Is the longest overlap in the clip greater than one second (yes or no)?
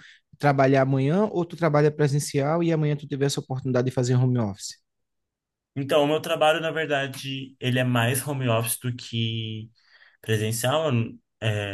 no